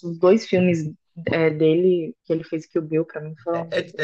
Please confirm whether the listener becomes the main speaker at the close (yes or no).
yes